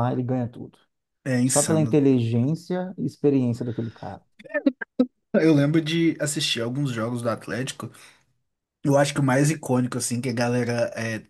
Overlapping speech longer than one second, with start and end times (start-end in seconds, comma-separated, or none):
none